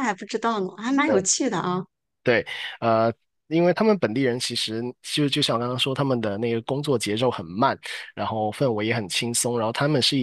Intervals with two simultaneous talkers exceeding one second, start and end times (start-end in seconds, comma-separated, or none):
none